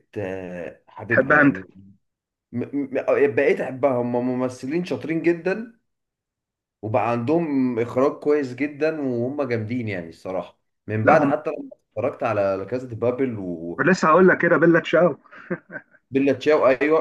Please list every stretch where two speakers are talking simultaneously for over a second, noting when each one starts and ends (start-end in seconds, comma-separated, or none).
none